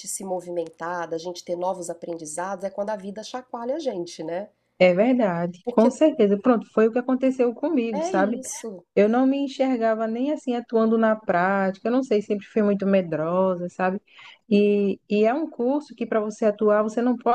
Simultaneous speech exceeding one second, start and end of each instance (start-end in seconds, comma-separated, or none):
none